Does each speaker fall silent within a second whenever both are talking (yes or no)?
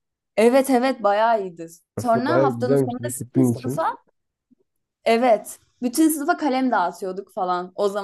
no